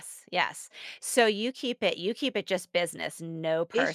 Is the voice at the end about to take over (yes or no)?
yes